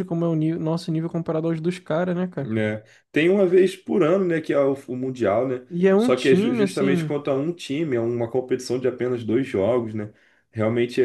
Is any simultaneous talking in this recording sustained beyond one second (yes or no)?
yes